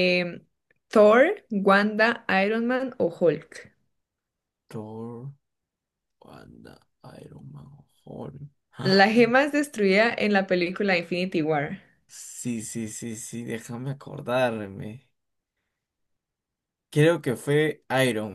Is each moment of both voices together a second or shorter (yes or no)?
yes